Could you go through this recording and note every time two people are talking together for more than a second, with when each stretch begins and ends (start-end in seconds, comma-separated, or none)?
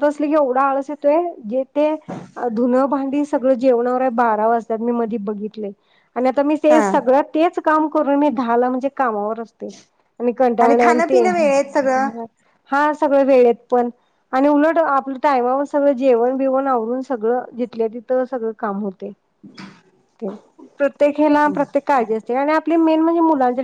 10.8-12.2